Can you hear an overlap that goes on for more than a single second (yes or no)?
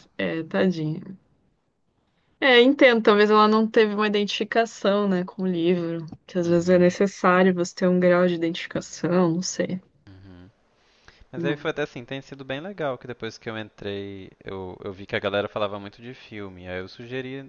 no